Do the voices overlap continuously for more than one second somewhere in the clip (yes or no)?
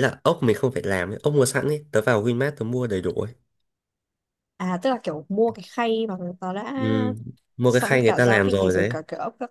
yes